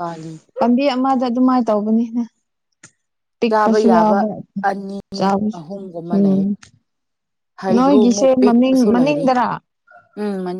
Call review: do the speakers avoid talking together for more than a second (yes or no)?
no